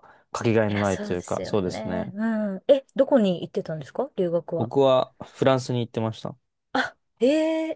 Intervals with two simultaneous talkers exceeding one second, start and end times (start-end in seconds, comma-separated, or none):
0.7-2.1